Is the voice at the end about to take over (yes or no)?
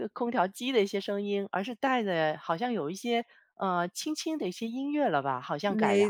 yes